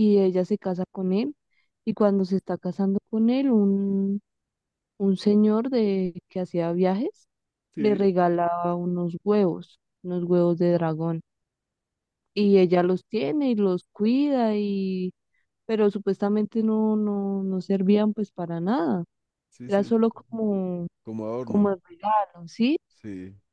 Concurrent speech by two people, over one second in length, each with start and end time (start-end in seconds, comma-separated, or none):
none